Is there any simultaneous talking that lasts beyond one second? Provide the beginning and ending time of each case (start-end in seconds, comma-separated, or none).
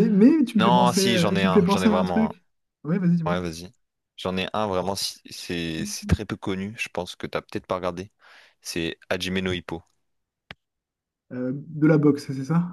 0.6-2.3